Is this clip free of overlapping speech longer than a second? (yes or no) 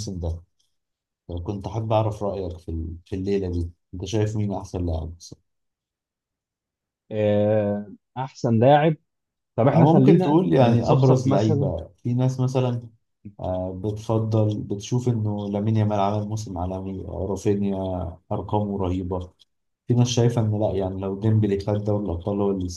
no